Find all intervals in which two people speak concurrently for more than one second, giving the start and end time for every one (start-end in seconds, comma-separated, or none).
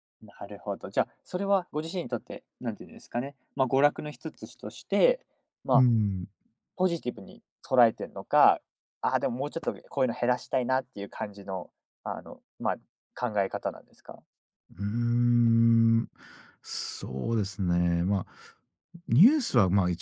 none